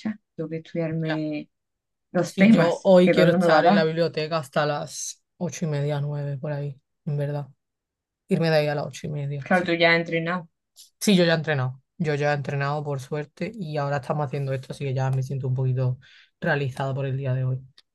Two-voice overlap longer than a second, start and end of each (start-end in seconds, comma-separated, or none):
2.2-3.8